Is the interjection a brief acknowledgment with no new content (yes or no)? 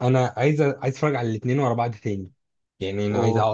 yes